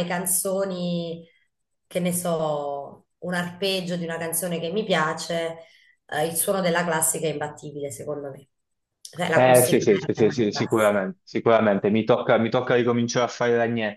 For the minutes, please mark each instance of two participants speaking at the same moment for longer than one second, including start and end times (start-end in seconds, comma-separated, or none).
9.3-11.0